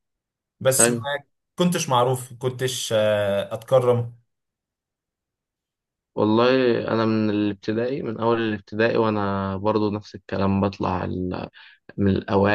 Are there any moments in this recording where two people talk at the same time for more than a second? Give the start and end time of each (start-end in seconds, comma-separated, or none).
none